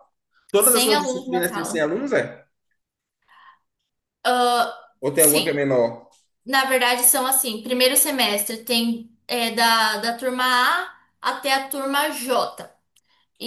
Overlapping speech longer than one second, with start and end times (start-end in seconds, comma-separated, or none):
0.6-1.9